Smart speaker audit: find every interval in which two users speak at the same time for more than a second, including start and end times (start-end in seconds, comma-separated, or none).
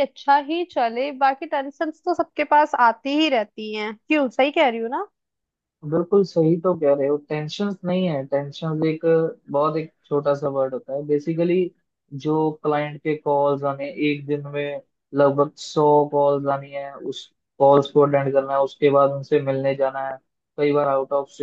none